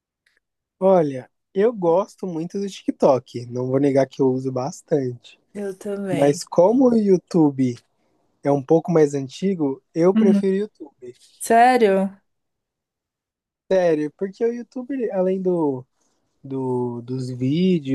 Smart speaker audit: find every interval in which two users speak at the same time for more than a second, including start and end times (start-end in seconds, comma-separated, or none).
none